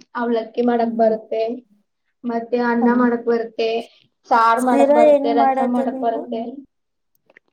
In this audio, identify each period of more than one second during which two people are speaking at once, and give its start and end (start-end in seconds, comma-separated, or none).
4.6-6.2